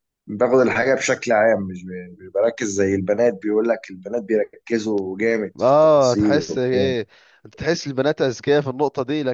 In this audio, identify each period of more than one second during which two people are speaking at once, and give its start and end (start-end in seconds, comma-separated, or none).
5.6-6.9